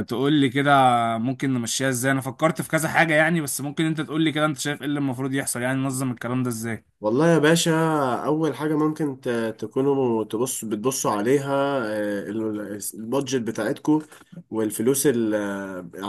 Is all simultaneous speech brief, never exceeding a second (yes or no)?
yes